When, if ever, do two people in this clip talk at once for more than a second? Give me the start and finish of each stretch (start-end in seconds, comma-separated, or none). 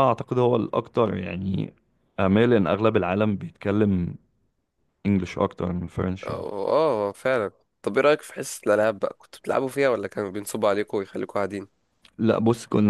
none